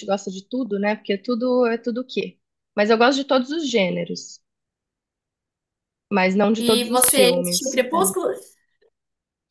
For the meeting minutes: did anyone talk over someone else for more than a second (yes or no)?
yes